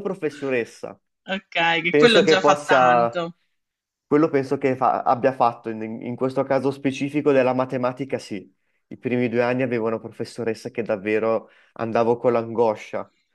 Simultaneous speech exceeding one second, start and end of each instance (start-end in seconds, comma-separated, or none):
1.9-3.2